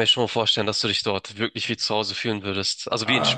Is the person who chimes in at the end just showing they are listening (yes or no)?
no